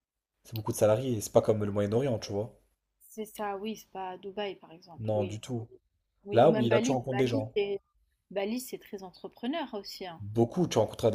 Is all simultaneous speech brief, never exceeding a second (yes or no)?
no